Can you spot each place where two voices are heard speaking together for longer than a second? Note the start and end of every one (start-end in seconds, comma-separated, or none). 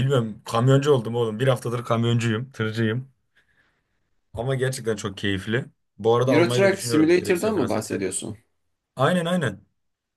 6.2-8.0